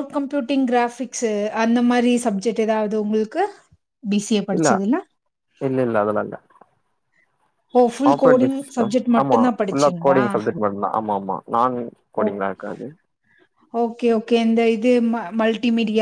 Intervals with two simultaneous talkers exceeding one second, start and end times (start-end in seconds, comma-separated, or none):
8.1-10.4